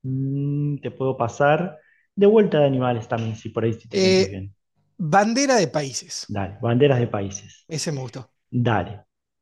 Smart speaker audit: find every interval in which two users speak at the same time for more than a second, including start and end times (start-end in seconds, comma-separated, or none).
none